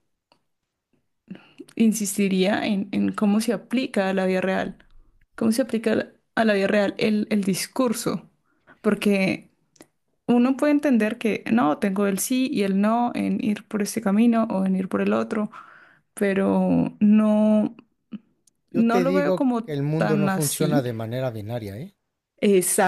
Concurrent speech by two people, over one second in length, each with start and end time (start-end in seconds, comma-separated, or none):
18.7-20.8